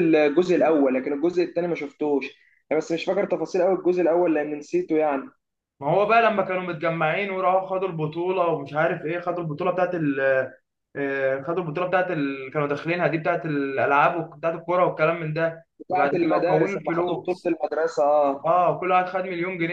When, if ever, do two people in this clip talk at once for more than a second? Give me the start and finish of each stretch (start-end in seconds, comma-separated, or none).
15.8-17.5